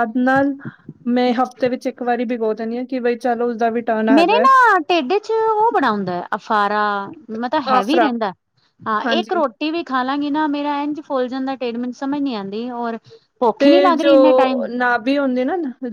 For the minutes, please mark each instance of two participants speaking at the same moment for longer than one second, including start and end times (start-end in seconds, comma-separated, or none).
none